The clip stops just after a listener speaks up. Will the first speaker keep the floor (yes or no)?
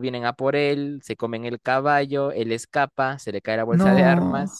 yes